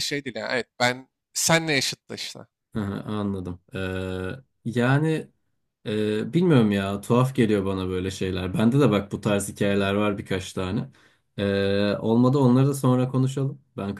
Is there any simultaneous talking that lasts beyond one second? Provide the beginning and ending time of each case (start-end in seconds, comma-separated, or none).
none